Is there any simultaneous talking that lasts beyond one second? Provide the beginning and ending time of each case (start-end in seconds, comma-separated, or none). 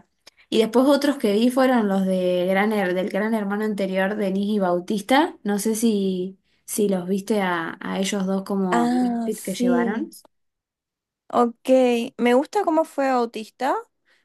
8.7-10.0